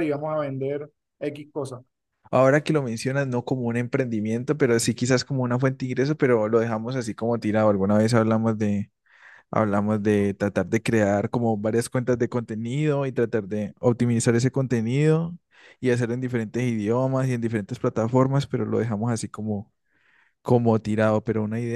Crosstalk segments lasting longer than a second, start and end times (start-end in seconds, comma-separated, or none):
none